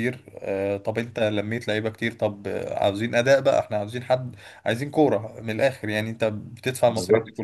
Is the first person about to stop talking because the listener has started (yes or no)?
no